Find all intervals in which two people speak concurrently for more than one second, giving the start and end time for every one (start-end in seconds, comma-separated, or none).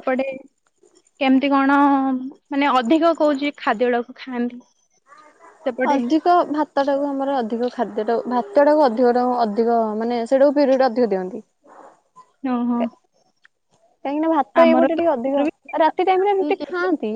15.1-16.6